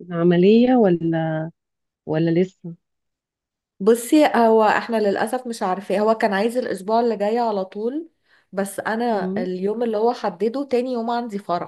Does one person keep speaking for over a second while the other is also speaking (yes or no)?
no